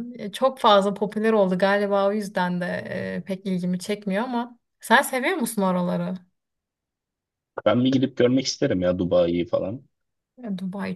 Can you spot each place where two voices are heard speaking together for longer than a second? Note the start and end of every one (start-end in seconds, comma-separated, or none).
none